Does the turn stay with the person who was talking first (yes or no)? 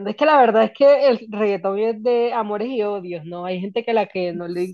yes